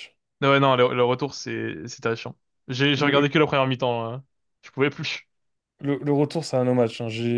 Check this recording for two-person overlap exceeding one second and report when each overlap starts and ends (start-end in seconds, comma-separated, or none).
none